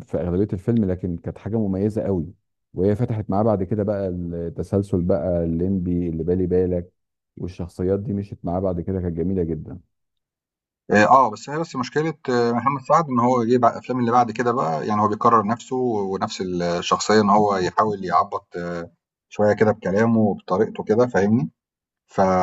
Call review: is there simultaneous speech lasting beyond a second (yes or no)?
no